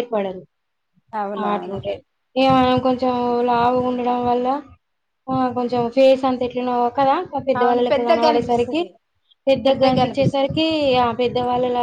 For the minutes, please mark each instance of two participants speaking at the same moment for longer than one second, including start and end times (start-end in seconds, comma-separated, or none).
7.6-8.8